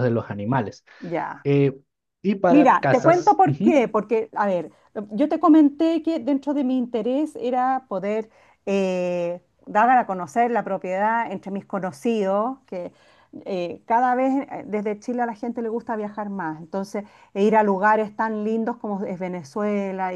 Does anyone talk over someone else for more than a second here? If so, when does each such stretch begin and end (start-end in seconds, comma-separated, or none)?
2.5-3.8